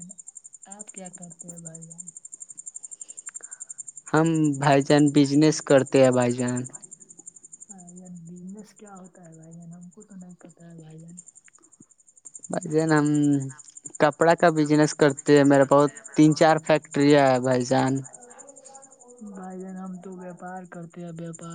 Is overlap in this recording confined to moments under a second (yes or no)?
yes